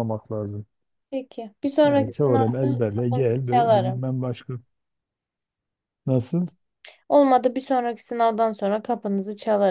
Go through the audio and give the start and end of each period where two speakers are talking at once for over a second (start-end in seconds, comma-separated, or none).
1.8-4.0